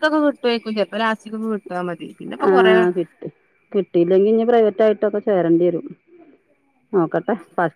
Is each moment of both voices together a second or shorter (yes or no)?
yes